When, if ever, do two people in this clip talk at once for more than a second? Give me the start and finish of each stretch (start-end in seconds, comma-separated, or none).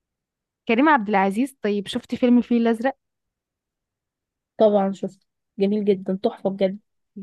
none